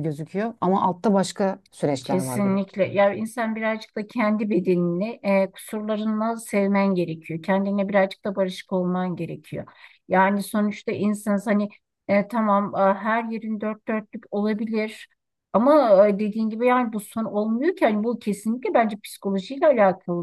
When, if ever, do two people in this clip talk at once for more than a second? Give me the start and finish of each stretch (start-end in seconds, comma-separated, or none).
none